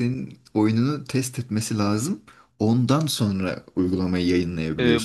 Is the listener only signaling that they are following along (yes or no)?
no